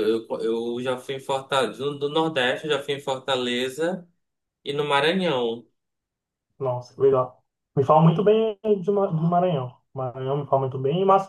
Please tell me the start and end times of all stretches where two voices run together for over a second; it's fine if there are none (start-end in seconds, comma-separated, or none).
none